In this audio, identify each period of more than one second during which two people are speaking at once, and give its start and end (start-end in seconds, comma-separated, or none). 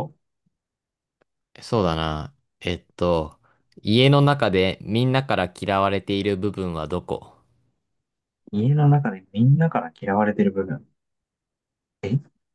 none